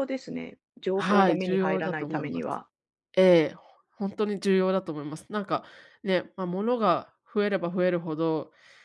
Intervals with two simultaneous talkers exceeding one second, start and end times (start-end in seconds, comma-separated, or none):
0.9-2.6